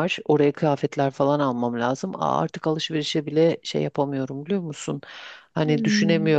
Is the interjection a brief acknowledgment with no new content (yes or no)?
yes